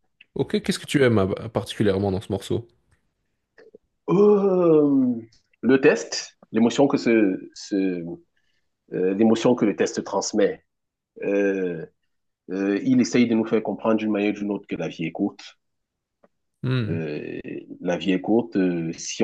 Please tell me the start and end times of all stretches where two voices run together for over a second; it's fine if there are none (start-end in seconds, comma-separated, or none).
none